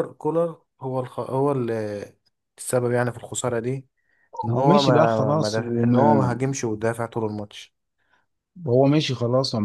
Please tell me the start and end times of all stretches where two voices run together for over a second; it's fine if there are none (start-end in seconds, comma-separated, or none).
4.5-6.0